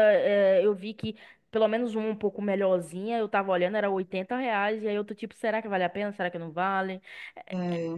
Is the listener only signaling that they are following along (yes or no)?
yes